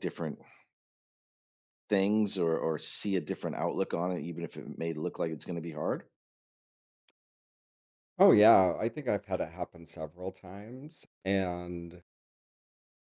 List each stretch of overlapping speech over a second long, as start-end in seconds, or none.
none